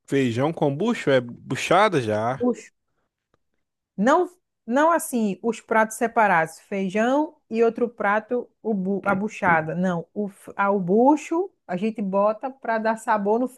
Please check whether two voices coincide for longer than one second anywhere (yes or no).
no